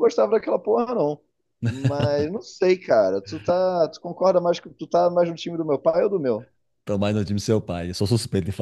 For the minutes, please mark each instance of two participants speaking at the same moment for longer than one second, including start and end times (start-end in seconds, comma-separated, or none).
none